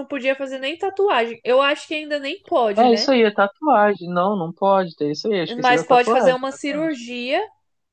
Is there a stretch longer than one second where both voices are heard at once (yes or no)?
yes